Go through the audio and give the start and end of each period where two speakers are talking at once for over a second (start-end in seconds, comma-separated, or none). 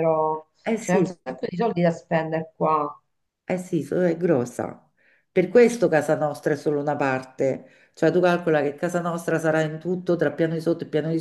none